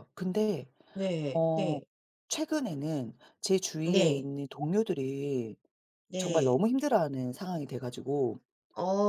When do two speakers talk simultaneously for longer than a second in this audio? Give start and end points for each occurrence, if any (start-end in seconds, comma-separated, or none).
none